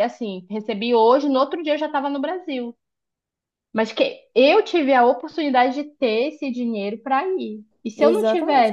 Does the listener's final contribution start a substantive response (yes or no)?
yes